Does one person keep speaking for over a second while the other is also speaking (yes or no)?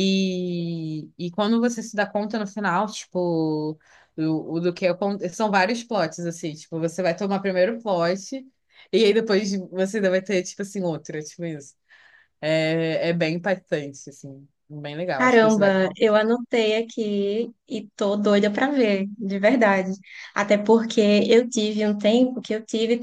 no